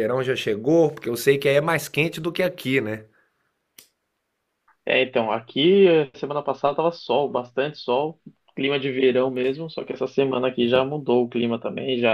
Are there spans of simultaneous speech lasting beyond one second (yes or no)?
no